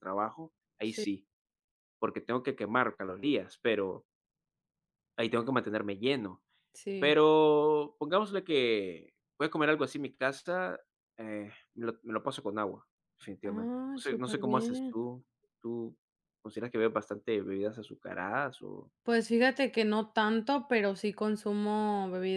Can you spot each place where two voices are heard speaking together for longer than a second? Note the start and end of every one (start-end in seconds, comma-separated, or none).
13.4-15.0